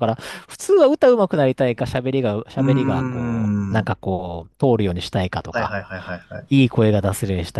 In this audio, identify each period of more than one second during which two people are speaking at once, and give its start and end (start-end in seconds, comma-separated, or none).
2.6-3.9